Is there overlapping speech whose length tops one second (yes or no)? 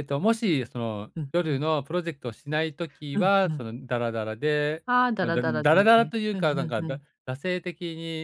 yes